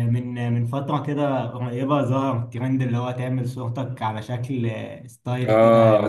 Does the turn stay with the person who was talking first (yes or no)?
no